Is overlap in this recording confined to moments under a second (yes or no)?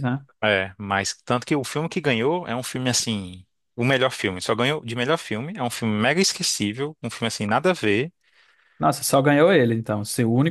yes